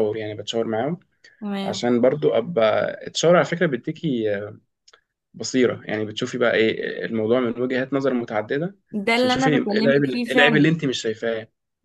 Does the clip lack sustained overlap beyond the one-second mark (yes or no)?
no